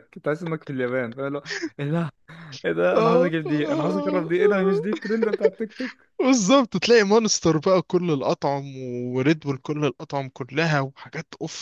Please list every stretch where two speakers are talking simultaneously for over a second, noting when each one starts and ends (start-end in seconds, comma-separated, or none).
none